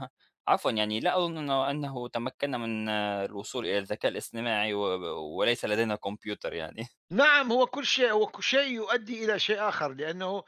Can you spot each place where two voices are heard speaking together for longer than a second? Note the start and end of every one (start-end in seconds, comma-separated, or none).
none